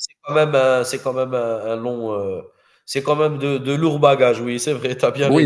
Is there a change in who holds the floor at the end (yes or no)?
yes